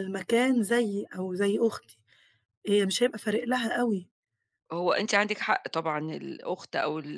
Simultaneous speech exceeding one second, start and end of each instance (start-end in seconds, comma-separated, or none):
none